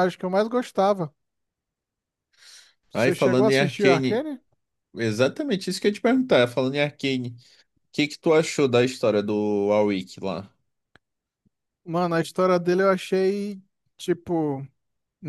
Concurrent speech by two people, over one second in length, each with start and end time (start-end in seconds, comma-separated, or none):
2.9-4.2